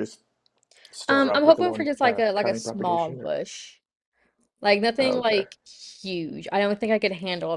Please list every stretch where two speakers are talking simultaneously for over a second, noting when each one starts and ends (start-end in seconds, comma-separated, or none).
1.1-3.3